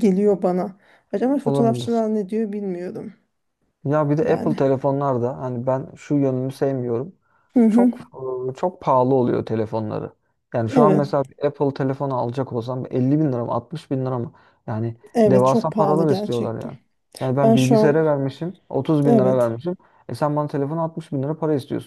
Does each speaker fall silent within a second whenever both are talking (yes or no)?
no